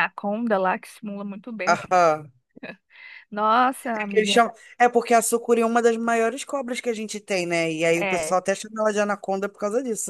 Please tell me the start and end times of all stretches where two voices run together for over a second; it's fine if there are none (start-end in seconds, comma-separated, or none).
none